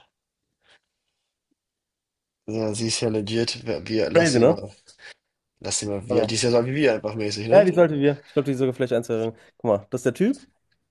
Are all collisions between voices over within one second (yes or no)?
yes